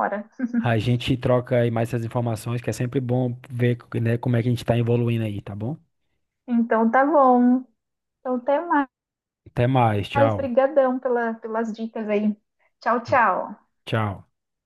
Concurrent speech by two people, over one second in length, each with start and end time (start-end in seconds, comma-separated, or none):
none